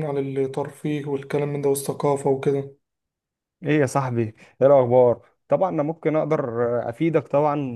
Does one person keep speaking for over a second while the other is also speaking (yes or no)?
no